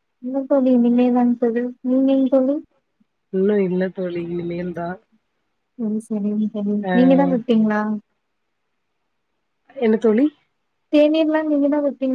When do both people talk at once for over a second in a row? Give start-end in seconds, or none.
none